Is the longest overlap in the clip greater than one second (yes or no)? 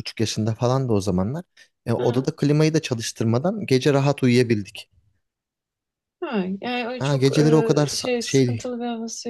yes